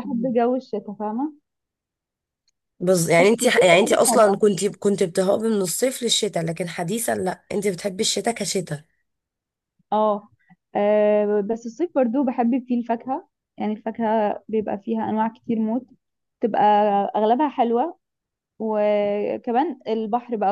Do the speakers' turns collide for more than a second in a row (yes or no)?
yes